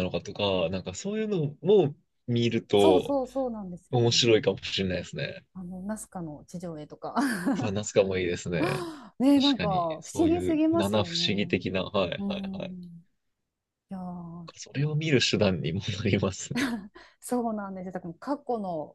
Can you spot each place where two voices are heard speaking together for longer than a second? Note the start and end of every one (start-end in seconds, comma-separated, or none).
9.3-11.3